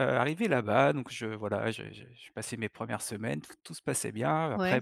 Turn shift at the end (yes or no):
no